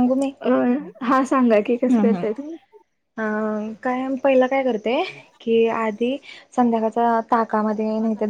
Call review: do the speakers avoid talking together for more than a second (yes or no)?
yes